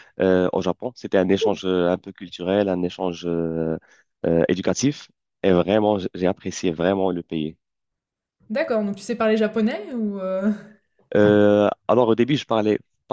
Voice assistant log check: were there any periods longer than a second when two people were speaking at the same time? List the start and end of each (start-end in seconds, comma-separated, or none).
none